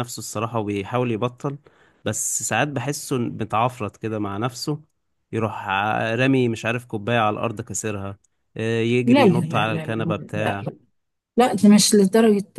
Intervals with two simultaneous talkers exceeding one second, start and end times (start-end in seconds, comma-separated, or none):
9.0-10.6